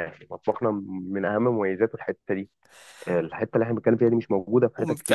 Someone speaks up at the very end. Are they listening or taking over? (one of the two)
taking over